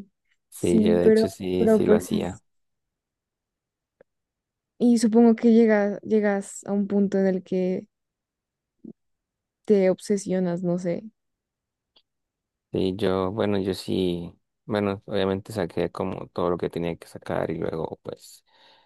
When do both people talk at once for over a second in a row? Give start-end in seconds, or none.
0.6-2.4